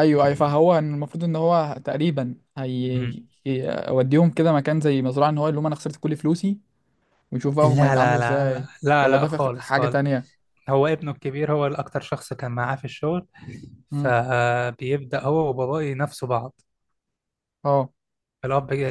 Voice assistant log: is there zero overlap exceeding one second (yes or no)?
no